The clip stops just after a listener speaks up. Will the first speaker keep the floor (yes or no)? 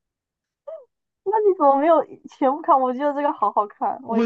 no